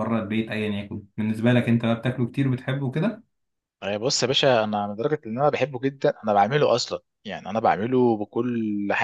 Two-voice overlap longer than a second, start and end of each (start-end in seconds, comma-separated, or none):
none